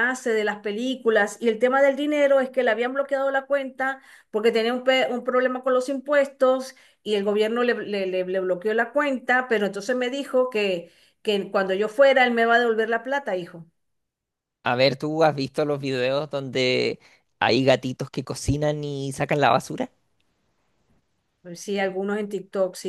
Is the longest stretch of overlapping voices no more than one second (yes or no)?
yes